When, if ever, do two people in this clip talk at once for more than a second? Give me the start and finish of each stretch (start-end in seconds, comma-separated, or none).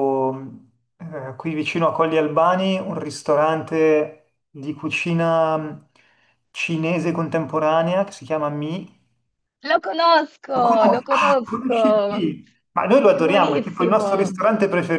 10.5-12.3, 13.0-14.3